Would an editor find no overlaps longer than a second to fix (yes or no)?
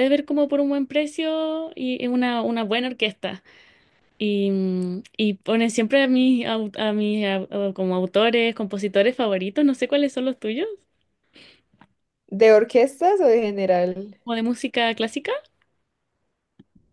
yes